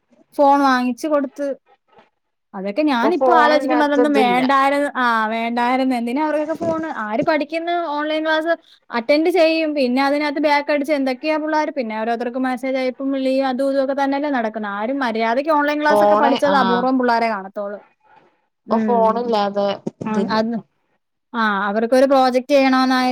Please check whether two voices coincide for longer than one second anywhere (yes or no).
yes